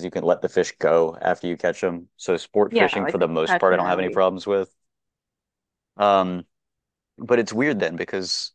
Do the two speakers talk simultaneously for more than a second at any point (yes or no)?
yes